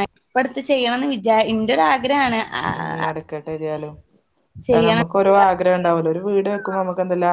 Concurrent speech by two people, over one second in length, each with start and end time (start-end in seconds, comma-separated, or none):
none